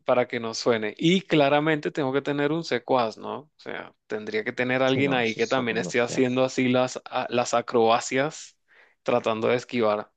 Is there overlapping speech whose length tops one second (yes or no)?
yes